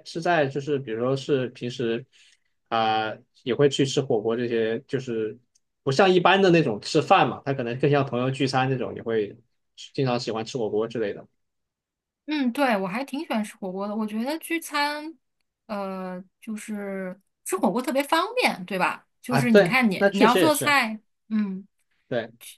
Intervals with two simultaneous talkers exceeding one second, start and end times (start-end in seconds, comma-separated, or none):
19.3-20.8